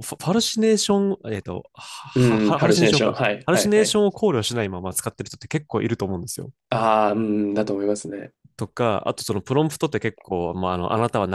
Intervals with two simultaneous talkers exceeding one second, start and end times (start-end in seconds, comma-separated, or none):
2.1-4.0